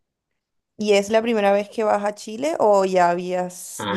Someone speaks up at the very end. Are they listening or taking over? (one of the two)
taking over